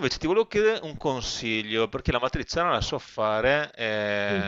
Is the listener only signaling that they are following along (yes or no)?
yes